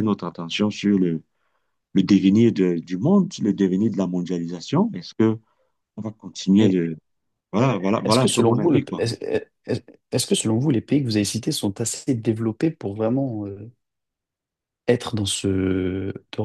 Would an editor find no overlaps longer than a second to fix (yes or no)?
no